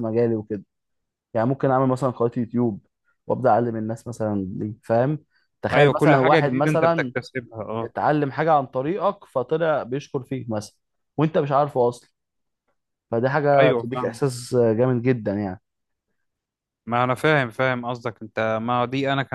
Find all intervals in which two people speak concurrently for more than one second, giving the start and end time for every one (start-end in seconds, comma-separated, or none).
5.7-7.1